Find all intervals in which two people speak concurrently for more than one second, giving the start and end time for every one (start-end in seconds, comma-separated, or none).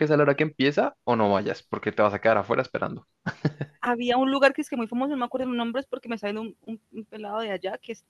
none